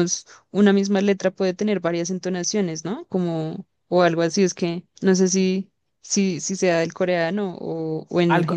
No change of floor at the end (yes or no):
no